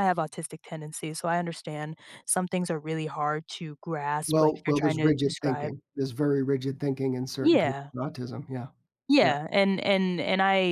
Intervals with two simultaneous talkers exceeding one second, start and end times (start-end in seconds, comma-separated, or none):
4.3-5.7